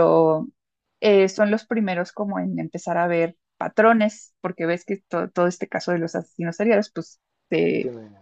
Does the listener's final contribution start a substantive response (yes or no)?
no